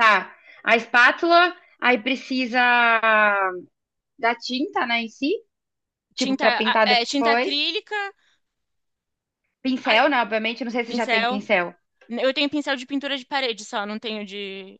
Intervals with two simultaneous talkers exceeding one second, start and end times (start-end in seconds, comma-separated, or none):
6.2-7.5